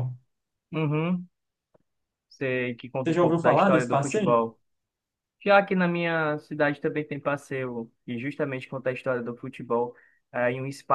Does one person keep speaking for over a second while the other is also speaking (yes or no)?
yes